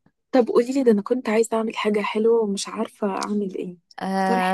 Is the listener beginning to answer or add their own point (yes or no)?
yes